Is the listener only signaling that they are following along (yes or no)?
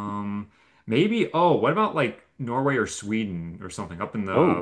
yes